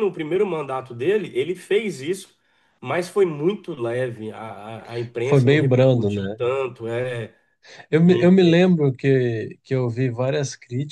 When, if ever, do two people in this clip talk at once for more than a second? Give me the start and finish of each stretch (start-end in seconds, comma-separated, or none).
5.2-6.4